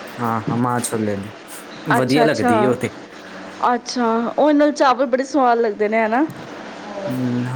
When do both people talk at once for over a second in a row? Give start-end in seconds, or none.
none